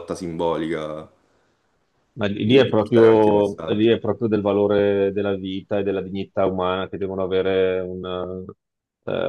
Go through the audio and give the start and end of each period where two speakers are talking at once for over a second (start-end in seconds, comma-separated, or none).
2.4-3.9